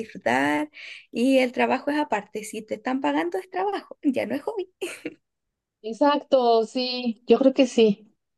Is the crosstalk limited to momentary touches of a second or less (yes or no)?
yes